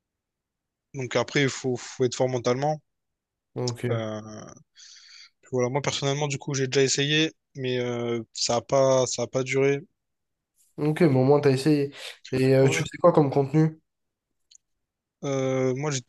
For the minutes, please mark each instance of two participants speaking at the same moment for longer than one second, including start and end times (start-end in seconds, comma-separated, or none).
none